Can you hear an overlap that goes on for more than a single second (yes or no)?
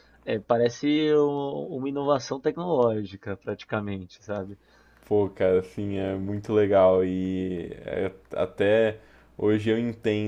no